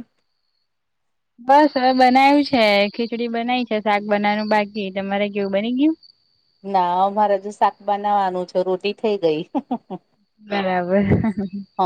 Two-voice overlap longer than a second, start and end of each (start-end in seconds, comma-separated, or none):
none